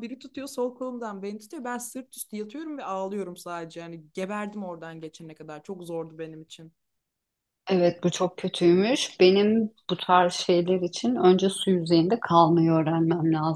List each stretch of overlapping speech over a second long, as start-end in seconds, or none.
none